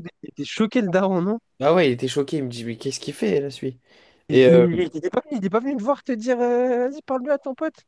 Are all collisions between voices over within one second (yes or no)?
yes